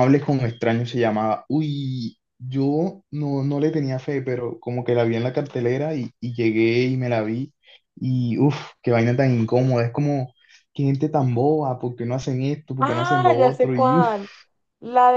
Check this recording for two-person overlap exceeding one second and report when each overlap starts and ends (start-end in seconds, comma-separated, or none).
12.8-14.2